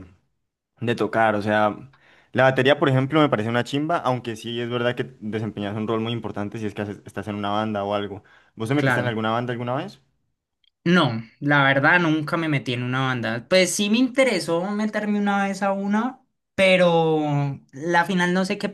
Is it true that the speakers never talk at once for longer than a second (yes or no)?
yes